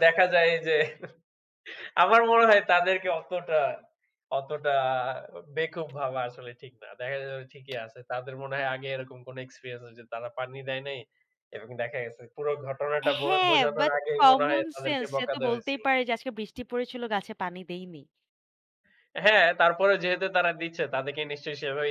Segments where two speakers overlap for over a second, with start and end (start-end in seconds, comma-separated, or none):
13.2-15.8